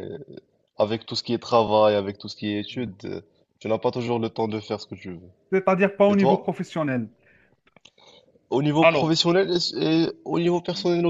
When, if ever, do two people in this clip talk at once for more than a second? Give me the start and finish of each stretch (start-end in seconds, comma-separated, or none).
none